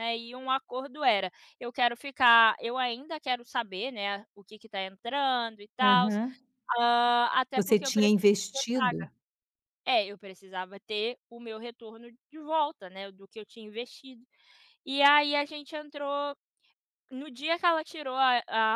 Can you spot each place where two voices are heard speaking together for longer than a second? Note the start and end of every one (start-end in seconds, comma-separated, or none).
7.5-9.1